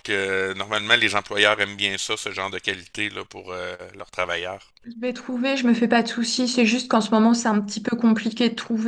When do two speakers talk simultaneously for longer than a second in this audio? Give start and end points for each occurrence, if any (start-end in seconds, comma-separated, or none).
none